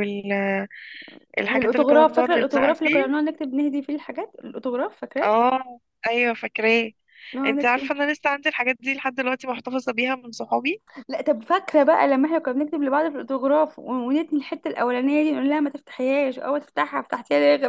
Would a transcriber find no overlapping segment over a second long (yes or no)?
no